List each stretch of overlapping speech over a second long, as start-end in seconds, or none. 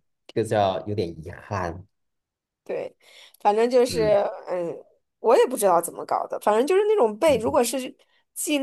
none